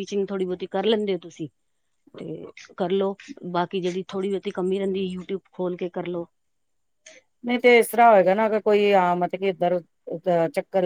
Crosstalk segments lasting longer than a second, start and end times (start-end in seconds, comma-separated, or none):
none